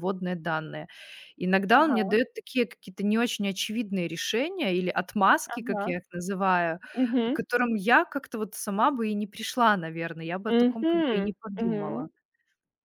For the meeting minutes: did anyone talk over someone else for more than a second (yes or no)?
yes